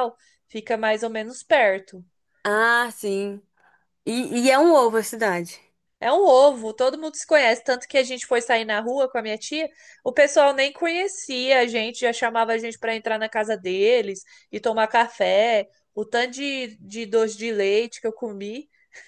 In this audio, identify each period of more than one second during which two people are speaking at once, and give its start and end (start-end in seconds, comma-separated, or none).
none